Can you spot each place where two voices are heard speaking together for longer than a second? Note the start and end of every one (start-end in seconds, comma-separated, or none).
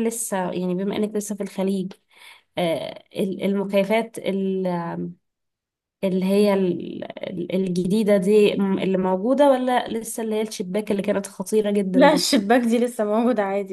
none